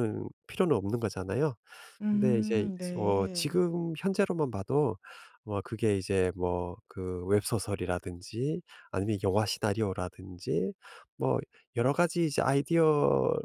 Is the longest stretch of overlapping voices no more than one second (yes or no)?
no